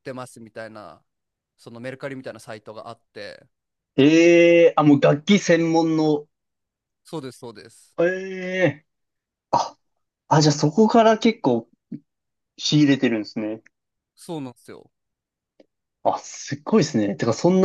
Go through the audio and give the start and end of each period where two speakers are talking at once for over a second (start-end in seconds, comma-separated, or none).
none